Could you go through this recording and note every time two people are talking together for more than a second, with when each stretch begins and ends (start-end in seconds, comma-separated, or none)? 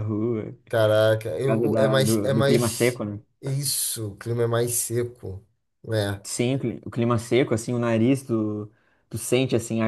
1.4-3.0